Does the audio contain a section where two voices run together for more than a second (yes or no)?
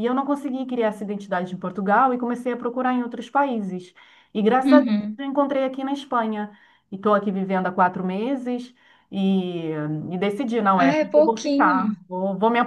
yes